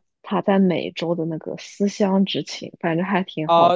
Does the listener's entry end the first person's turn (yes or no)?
yes